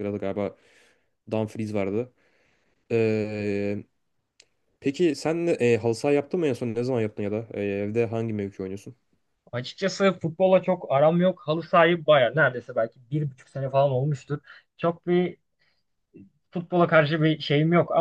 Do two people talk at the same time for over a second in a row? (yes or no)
no